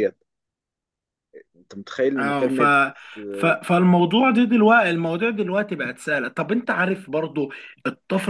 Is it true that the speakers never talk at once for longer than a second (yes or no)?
yes